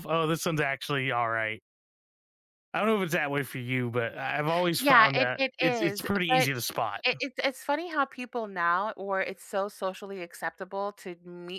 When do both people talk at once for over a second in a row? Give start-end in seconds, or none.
4.8-6.5